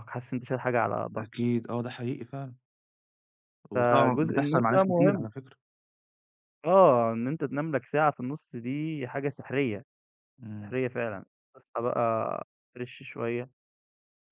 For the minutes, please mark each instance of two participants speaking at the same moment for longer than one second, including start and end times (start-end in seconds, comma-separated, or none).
3.7-5.3